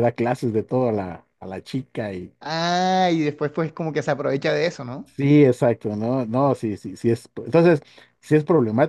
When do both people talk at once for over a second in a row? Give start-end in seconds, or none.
none